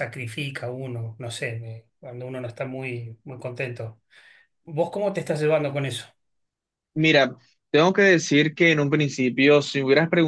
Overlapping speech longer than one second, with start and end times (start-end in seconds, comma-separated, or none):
none